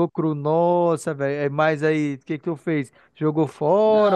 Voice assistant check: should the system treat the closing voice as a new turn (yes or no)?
yes